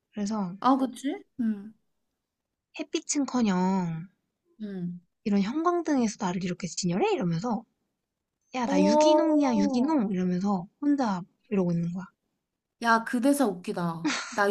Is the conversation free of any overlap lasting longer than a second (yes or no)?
no